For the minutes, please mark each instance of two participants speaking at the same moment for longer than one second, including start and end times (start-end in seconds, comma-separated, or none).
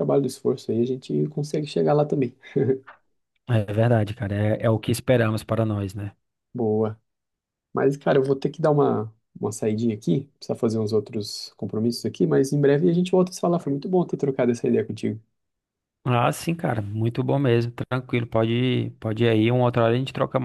none